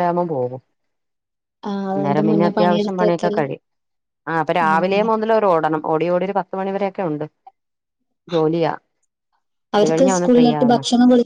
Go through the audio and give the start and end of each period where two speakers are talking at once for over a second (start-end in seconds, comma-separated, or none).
1.9-3.4